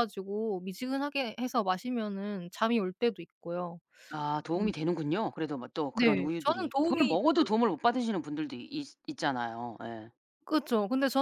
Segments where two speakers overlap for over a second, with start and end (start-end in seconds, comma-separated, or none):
5.9-7.7